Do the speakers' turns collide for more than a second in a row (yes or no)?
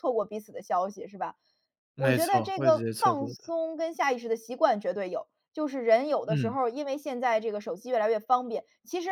yes